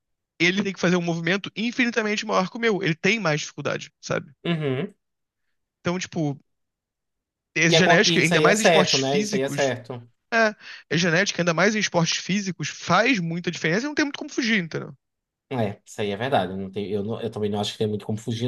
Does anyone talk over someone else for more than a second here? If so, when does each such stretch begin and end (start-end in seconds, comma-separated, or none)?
7.7-9.7